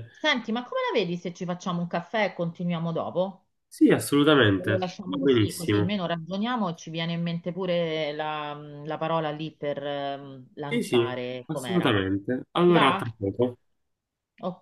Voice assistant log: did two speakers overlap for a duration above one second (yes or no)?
yes